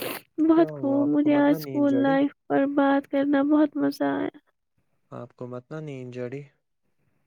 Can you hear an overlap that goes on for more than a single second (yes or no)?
yes